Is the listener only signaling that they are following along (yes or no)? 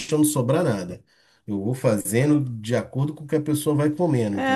no